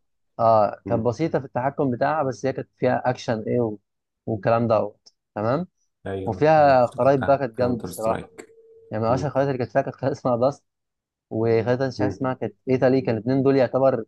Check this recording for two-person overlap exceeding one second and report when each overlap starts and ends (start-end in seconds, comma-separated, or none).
6.2-8.3